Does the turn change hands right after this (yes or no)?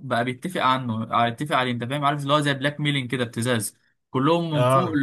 no